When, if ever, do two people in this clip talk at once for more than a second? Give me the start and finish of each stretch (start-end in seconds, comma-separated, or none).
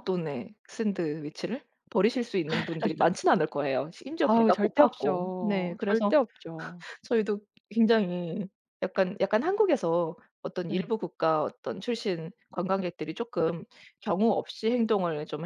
4.2-6.2